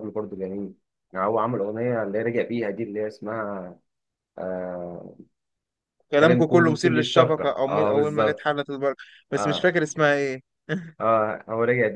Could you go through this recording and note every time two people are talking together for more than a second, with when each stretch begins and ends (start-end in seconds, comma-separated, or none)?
6.2-8.5